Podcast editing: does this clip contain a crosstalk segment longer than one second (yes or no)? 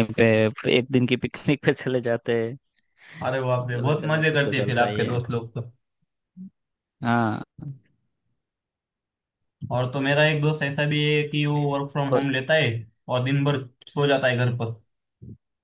yes